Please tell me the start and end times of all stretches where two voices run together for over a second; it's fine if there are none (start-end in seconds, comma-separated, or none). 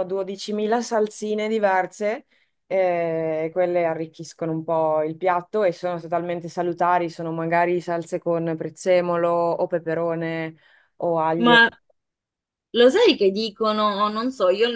none